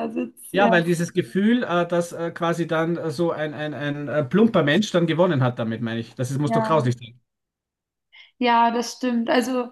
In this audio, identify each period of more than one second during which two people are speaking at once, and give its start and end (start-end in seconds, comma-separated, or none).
none